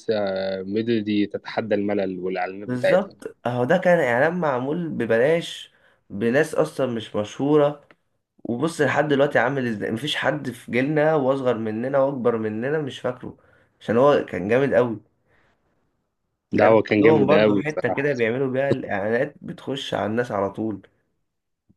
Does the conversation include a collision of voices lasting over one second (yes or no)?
yes